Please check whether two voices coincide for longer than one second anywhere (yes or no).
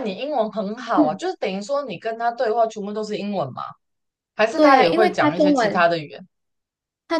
yes